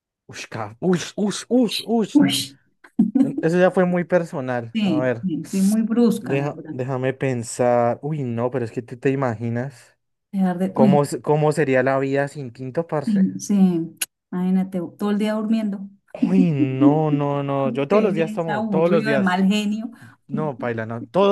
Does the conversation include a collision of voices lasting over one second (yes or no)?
yes